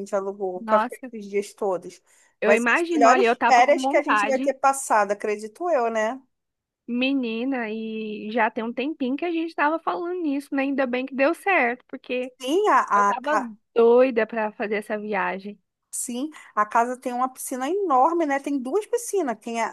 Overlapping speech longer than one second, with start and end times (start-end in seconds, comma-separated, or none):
2.4-4.5